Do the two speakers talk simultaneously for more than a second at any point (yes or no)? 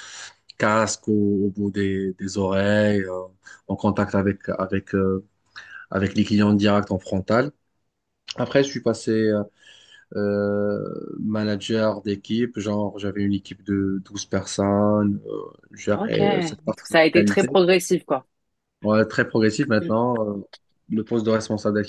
yes